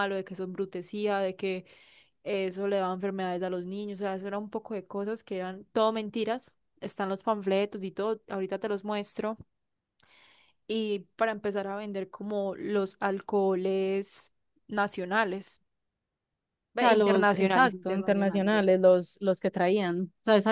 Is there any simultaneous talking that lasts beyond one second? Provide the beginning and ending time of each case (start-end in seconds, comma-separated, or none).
16.8-18.8